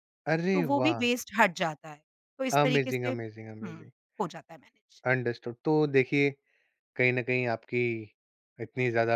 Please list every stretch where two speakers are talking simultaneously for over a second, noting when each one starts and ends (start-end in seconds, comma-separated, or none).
2.6-3.9